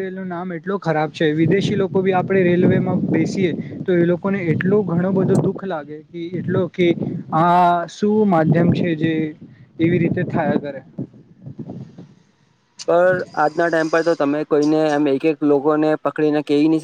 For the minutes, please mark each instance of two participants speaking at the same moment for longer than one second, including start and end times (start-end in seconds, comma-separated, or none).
none